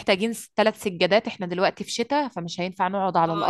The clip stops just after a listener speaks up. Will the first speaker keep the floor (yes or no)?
no